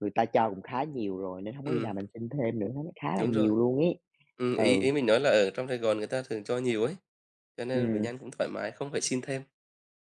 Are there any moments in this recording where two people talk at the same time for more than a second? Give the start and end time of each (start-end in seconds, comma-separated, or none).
none